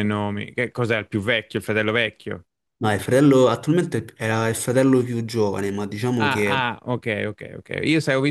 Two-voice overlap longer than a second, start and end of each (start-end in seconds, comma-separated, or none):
none